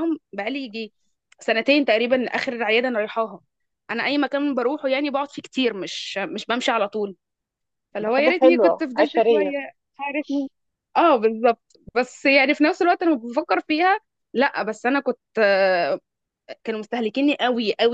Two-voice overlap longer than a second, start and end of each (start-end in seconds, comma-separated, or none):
8.0-9.6